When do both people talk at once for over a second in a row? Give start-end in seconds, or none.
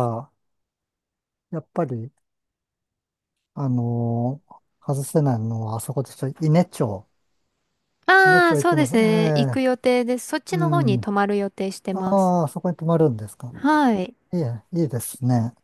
8.2-9.6